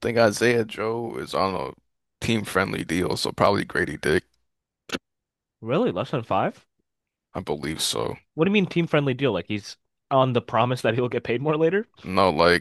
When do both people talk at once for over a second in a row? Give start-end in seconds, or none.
none